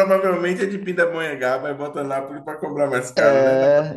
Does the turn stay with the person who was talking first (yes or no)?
no